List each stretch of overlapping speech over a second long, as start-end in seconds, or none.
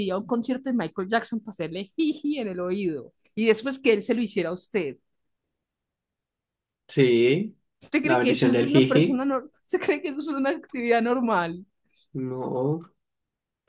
8.0-9.2